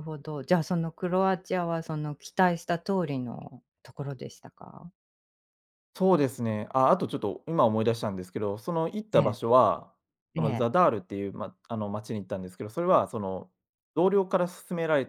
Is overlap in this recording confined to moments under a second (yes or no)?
yes